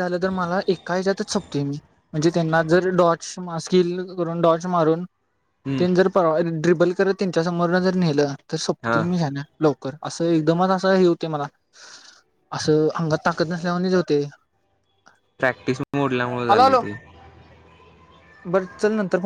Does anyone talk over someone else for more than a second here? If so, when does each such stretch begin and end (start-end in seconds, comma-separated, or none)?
none